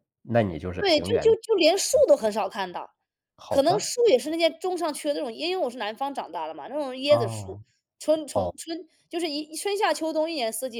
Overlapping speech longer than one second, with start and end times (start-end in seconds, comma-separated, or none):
none